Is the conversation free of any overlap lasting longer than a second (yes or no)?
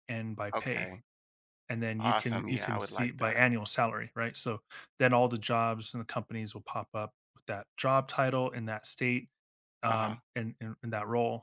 no